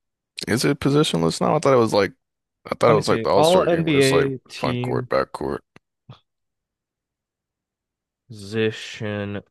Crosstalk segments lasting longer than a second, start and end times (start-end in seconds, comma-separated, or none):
2.9-5.1